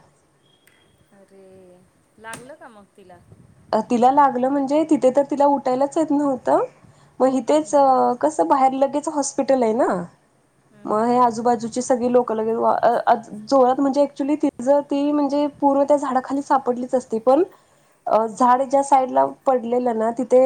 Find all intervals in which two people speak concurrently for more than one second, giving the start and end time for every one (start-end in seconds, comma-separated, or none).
none